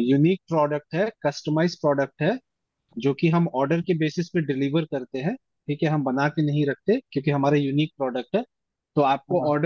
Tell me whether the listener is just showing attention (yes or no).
yes